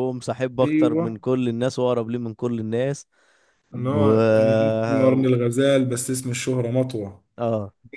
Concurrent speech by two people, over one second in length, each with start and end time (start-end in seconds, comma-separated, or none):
none